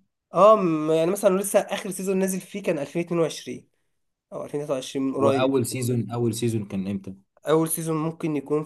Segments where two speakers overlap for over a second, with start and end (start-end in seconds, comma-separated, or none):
none